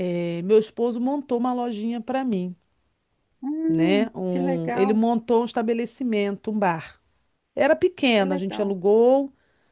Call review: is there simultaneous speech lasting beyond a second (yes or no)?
yes